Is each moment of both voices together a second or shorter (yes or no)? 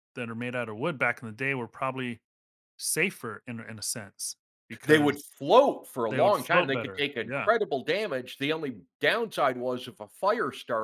no